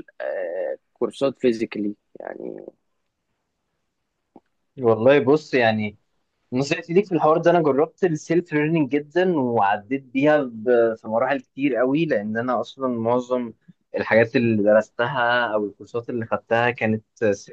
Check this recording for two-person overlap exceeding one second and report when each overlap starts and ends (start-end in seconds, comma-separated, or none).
none